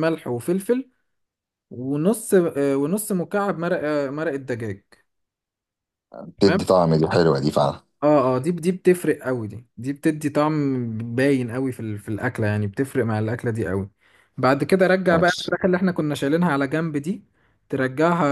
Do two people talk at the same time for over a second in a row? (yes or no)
no